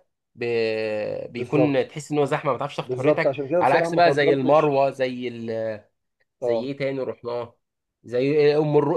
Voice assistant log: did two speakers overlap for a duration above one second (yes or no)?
yes